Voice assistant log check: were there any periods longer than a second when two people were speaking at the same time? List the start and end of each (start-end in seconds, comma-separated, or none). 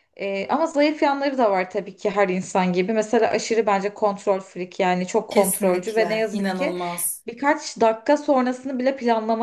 5.3-6.8